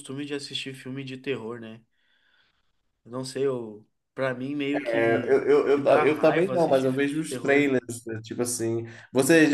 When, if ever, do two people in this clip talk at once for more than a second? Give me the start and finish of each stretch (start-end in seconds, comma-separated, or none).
4.9-7.7